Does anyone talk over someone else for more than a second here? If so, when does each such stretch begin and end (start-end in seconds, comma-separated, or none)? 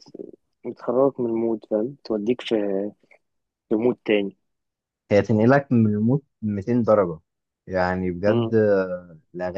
none